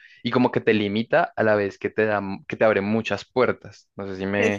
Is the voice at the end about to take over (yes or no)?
yes